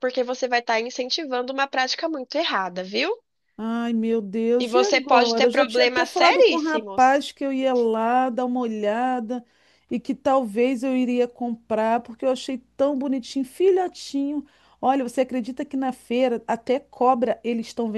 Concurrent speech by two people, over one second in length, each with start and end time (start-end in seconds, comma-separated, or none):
4.6-7.2